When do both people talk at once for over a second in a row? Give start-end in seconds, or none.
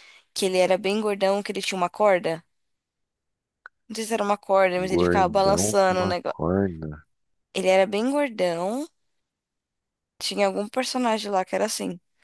4.8-6.4